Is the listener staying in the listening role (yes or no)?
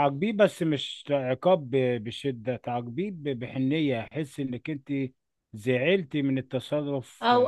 no